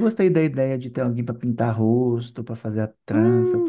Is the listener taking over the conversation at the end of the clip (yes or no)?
yes